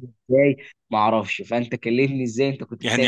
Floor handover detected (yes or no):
yes